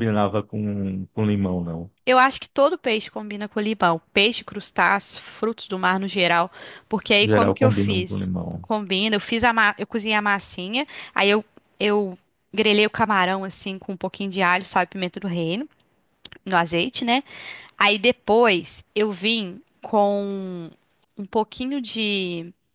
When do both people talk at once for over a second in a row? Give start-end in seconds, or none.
7.2-8.7